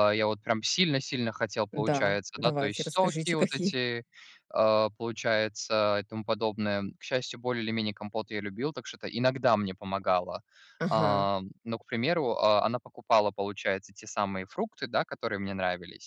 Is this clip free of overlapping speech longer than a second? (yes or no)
no